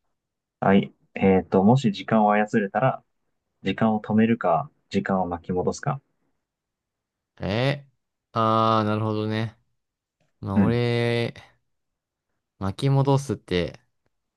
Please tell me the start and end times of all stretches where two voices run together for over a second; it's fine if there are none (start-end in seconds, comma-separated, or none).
none